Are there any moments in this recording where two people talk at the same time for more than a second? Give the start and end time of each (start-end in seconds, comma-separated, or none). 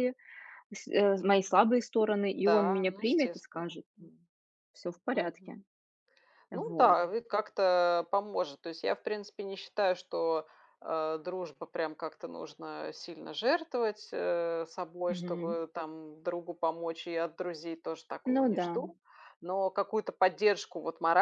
2.4-4.1